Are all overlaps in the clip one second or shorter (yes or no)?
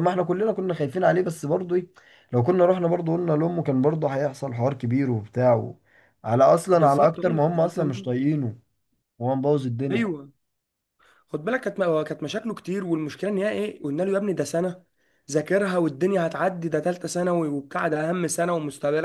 no